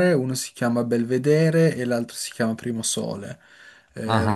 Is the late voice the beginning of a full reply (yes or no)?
yes